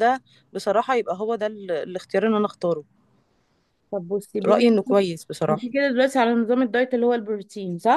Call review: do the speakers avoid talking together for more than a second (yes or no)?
yes